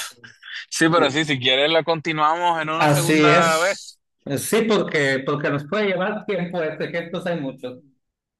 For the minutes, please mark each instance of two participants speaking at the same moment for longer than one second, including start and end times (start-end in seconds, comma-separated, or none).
2.7-4.0